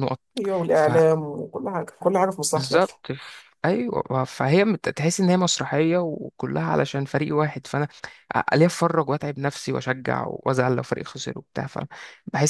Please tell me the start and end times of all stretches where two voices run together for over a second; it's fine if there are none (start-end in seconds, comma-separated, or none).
none